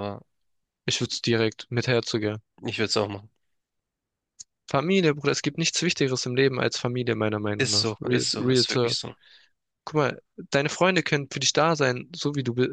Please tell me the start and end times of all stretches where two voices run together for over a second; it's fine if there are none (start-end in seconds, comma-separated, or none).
7.6-9.0